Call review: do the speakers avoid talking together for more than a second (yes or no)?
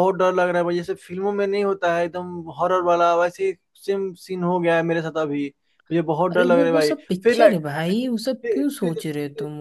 no